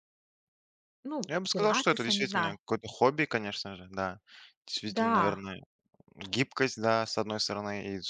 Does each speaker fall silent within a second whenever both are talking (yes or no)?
no